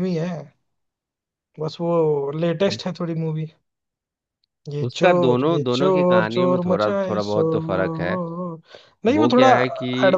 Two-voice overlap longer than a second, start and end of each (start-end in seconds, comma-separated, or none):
4.8-7.6